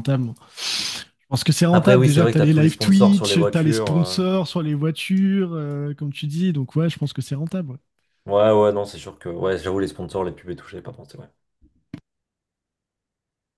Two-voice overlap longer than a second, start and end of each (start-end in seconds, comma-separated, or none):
1.7-4.2